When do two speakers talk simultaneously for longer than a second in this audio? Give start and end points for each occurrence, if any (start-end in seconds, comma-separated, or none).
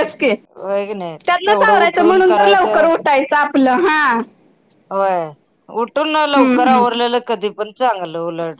1.3-2.9